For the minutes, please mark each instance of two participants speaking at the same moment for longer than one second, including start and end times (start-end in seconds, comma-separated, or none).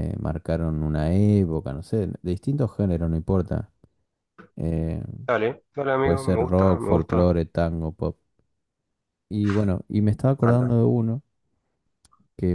6.0-7.3